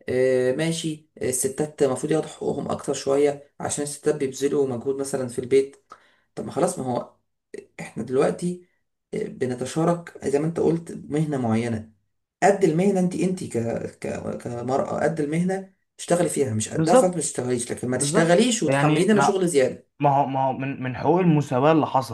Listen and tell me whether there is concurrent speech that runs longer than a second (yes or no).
yes